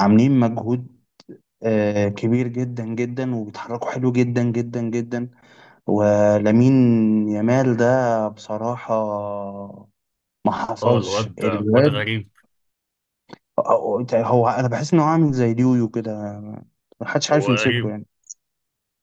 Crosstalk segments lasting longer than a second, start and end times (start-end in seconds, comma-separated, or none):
10.8-12.0